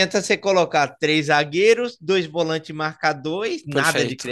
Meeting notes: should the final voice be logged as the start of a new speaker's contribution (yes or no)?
yes